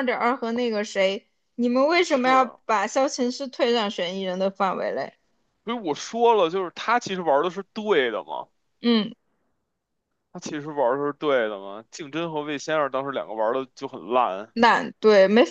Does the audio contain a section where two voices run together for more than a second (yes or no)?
no